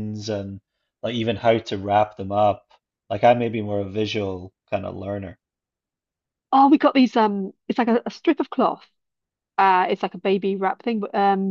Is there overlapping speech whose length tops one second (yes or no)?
no